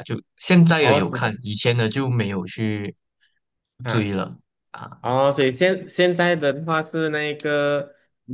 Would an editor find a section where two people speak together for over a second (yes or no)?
no